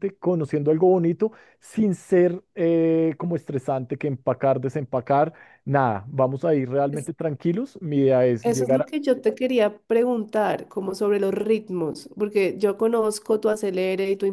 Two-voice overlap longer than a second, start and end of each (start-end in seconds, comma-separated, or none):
none